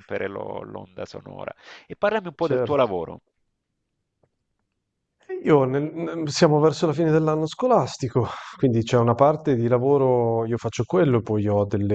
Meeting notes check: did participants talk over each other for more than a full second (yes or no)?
no